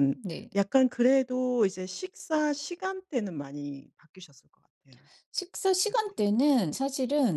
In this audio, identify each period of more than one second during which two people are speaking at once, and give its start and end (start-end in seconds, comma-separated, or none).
none